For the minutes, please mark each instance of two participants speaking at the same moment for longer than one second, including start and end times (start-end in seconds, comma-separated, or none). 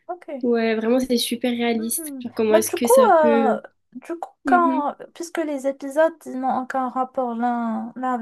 1.8-3.6